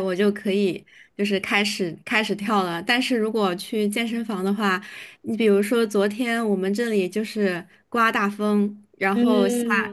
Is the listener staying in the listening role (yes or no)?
yes